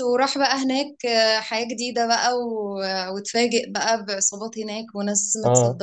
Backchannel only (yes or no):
yes